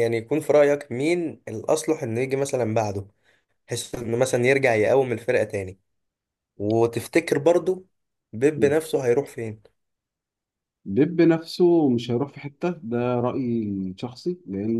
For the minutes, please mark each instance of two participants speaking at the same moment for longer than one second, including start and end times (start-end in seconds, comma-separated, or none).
none